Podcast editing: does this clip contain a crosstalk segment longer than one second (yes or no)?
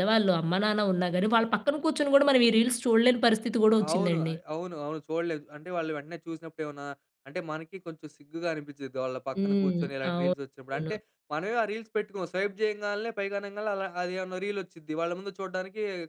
yes